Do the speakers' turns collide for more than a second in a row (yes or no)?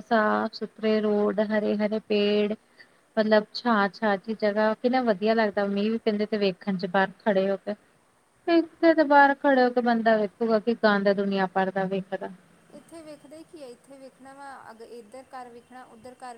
no